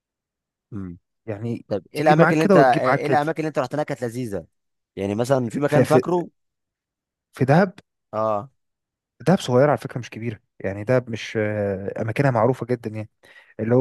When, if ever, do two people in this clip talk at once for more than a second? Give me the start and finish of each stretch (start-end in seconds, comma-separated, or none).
1.7-3.2